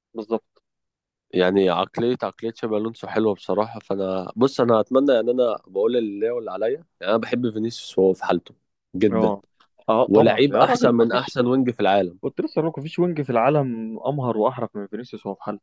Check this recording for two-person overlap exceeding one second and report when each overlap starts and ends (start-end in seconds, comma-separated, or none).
10.1-11.4